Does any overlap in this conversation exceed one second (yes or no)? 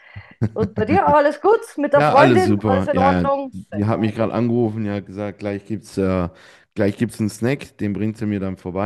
yes